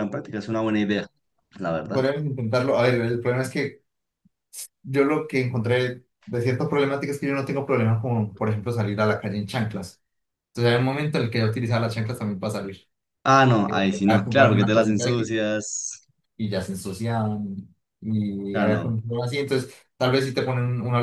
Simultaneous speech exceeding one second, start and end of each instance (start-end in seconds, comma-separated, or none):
13.7-15.3